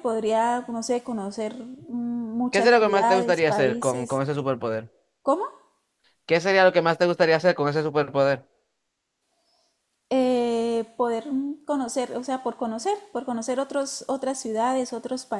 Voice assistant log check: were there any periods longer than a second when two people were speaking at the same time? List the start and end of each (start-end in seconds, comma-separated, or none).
2.5-4.2